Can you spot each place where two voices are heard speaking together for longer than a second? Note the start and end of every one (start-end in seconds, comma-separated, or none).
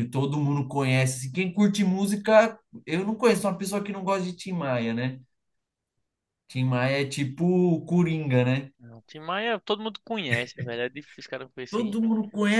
none